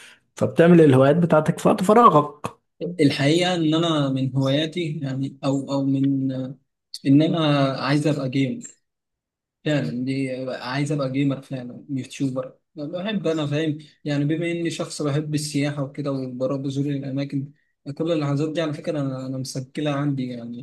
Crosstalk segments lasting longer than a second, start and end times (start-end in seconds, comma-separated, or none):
none